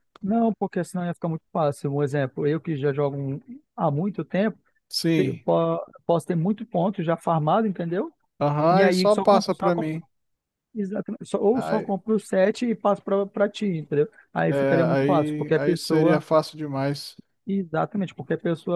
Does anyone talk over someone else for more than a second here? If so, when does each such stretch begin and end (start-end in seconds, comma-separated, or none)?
8.7-10.0, 14.5-16.2